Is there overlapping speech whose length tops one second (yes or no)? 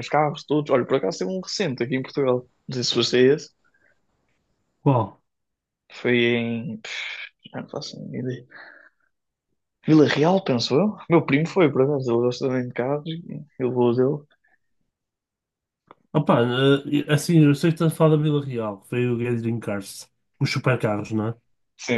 no